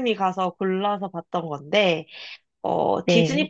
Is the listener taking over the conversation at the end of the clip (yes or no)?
no